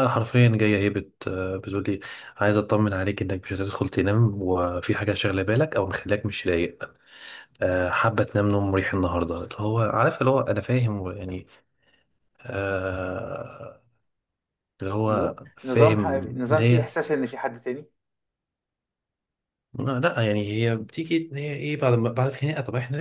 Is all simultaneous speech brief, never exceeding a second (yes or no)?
no